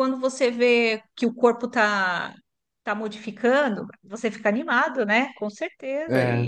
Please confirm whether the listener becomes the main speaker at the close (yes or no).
yes